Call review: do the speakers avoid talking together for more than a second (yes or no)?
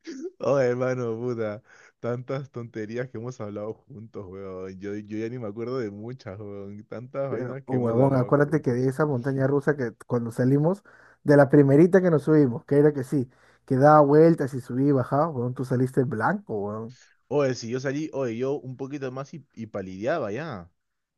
no